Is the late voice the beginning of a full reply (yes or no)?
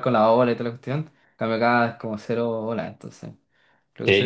yes